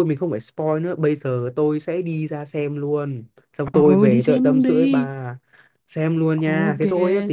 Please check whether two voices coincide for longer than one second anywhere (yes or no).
yes